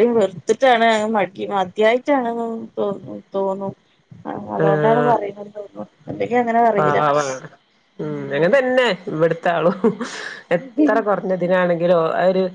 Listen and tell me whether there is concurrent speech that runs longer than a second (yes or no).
no